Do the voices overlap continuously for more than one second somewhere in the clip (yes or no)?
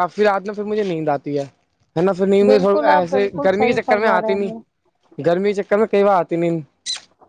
yes